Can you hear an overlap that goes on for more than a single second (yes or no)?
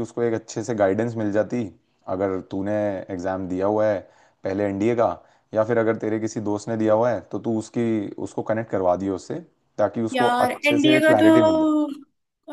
yes